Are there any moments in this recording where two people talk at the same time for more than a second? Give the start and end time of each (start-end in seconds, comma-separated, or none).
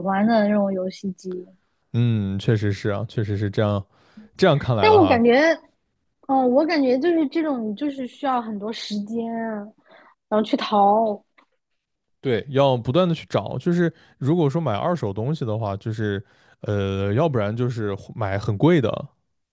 none